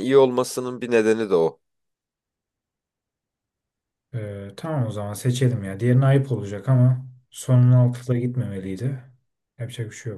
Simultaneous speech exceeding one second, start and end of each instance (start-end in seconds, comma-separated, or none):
none